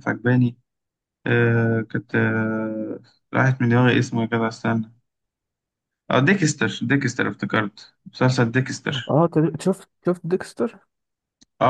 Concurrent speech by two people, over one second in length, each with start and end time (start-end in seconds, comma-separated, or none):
none